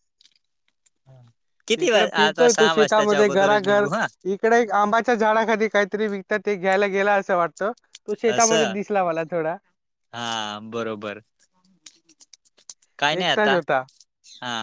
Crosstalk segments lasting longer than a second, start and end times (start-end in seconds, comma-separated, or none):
1.8-3.9